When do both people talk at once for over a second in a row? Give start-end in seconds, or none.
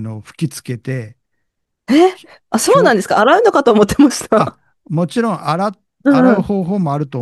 none